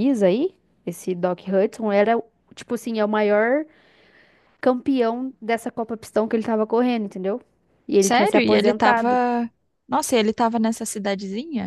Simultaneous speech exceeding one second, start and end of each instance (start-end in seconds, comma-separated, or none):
8.0-9.2